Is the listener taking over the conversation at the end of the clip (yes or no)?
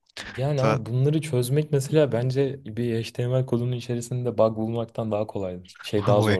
yes